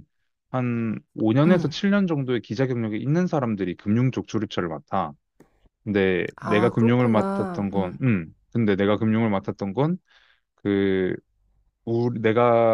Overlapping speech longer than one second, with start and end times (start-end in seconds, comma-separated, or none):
6.3-8.0